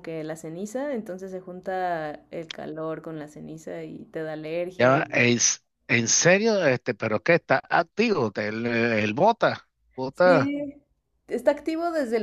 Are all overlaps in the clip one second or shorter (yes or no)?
yes